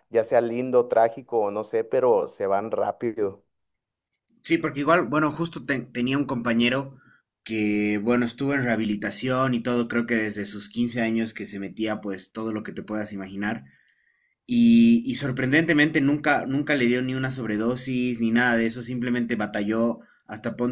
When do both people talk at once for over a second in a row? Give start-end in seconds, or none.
none